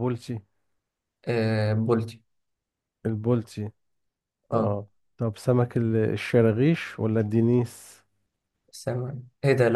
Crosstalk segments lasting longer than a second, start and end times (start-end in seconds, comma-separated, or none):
none